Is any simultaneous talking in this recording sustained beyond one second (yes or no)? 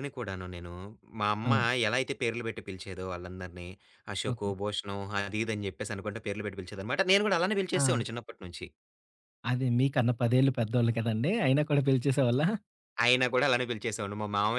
no